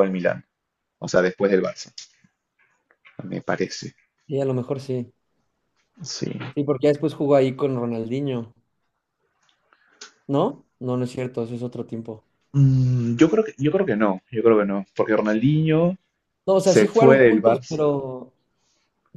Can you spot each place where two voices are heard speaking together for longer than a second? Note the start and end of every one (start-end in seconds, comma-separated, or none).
16.6-17.8